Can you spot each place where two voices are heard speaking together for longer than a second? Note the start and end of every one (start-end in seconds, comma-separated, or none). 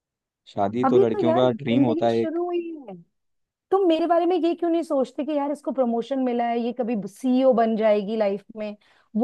0.8-2.4